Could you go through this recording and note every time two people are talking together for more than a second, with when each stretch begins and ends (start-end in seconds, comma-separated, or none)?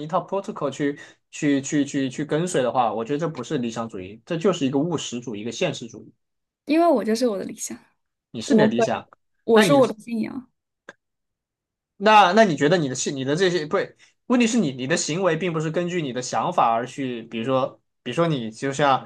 none